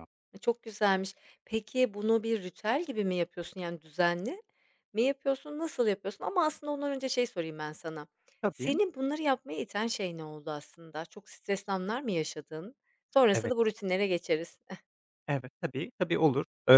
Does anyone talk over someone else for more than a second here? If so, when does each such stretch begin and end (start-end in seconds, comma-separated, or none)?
none